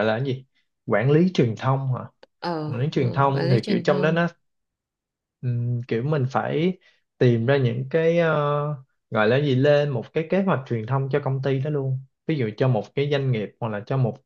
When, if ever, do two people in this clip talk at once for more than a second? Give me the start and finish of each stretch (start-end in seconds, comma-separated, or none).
2.7-4.3